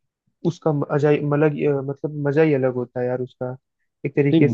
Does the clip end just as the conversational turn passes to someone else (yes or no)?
no